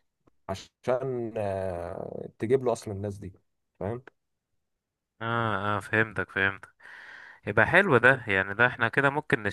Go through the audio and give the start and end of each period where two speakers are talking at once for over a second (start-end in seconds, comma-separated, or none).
none